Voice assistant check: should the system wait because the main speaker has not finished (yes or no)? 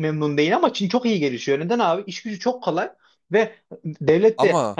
yes